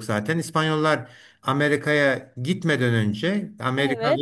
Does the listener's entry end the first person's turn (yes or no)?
no